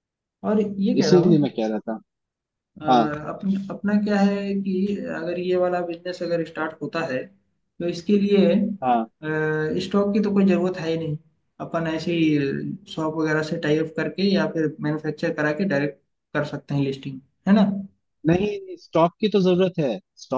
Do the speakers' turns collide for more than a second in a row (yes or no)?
no